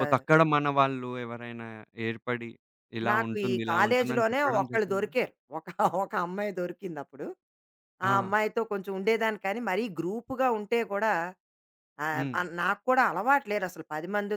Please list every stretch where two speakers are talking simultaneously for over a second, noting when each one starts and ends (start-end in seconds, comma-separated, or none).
3.1-5.1